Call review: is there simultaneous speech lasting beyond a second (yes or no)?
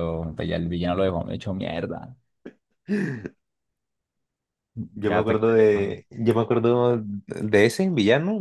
no